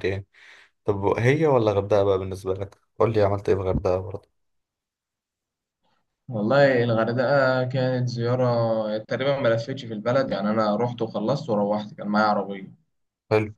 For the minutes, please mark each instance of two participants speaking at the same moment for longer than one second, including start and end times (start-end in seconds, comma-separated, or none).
none